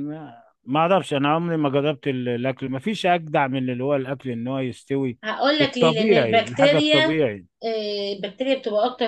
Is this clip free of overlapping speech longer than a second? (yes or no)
no